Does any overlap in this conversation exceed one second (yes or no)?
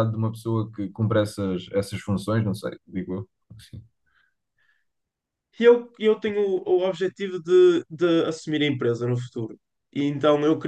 no